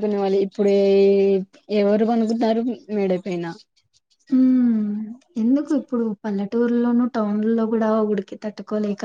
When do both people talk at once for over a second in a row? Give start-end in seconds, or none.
none